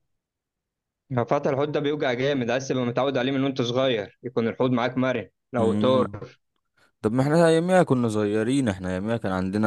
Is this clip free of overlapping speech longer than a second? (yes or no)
yes